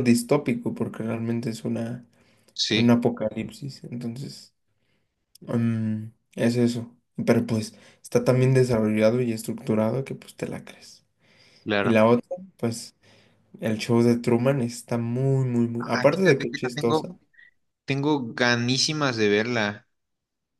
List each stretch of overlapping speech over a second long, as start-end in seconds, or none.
15.8-17.1